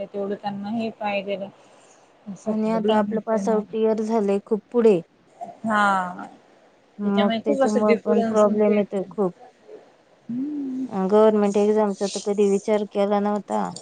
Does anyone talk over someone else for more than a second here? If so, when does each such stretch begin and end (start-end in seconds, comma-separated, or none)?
7.5-9.1